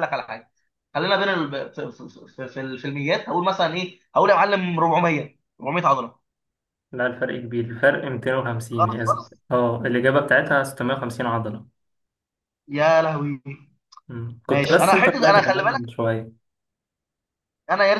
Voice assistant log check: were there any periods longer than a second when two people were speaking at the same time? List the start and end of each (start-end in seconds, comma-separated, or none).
14.5-15.9